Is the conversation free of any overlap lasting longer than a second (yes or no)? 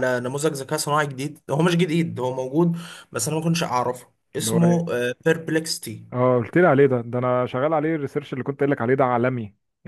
yes